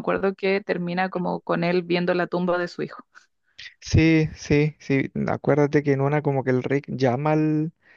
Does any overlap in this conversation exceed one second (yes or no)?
no